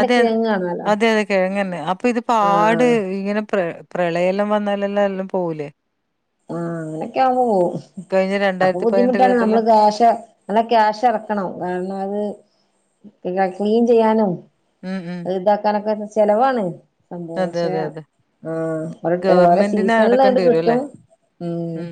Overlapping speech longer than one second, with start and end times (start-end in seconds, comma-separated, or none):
19.2-20.8